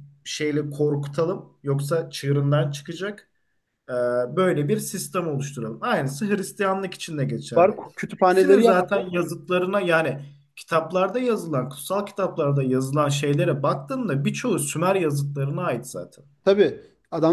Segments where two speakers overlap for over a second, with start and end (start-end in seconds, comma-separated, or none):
7.6-9.0